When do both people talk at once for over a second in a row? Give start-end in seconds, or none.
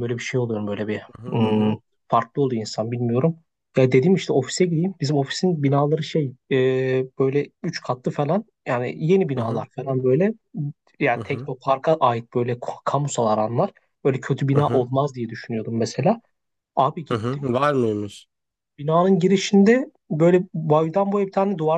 none